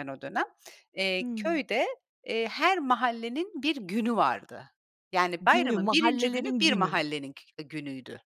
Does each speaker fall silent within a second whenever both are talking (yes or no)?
no